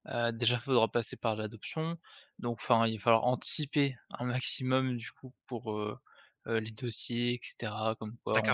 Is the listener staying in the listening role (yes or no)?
no